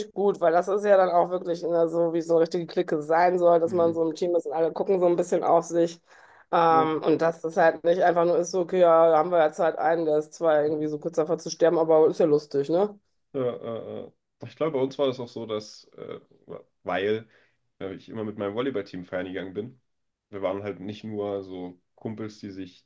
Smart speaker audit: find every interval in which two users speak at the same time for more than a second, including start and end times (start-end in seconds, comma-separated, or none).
none